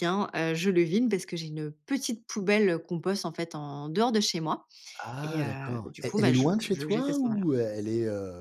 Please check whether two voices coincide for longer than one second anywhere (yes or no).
yes